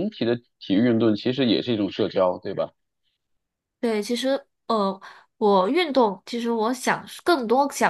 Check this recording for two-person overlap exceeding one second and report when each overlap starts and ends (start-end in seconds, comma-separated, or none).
none